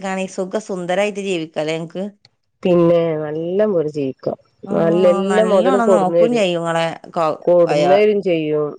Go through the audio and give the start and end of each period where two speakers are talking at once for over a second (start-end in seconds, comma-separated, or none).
4.8-6.4